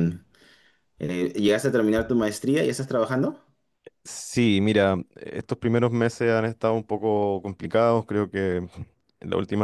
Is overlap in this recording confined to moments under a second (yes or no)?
yes